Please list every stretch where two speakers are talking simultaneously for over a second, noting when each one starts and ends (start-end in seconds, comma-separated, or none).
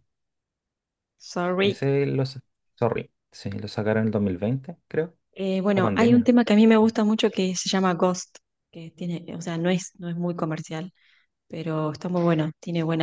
none